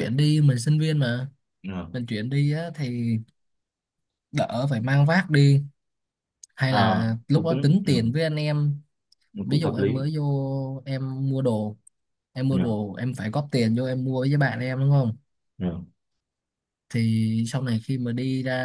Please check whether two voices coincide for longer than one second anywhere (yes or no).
yes